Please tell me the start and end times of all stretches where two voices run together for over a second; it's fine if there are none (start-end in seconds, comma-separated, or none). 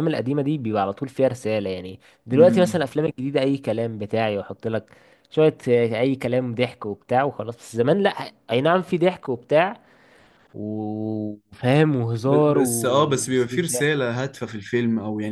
12.2-14.1